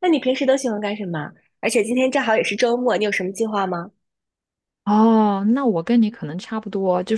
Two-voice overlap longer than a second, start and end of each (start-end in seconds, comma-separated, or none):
none